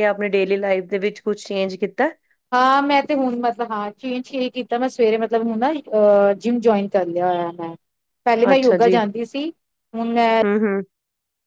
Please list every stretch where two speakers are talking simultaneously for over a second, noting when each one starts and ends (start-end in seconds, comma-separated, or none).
none